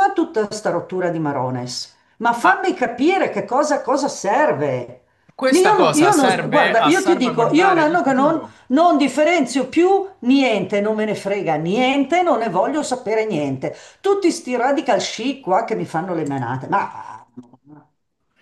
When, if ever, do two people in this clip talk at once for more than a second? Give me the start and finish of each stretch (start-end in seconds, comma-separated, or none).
5.5-8.5